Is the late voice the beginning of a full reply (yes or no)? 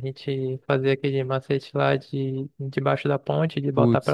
yes